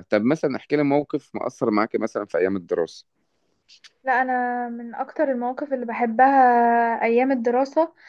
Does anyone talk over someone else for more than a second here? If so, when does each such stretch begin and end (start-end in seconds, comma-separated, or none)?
none